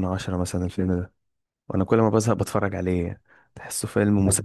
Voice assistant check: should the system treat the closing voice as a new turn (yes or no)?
yes